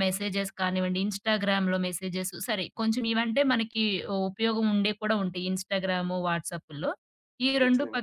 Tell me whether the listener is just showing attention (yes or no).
yes